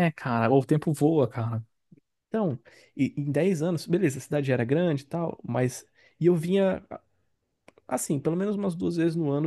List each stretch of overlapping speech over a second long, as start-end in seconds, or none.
none